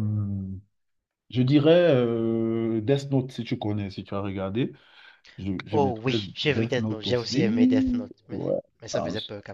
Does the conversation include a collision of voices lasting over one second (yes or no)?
yes